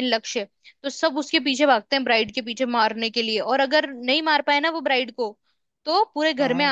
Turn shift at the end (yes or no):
no